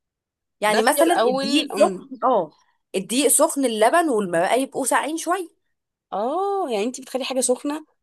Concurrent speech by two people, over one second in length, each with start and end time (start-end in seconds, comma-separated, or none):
0.7-2.1